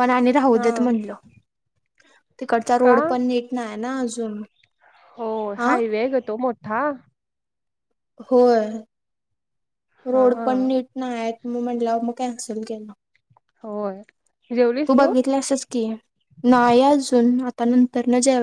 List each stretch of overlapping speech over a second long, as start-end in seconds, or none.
none